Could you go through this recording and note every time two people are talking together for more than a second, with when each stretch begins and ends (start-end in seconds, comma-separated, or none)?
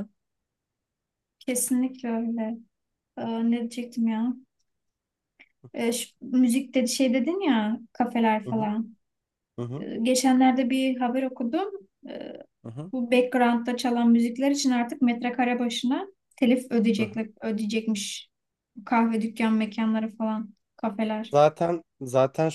none